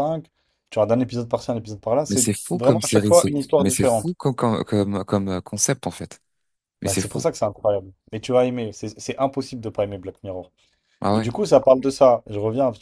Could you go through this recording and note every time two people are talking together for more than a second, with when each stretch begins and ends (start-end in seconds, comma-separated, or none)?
2.1-4.2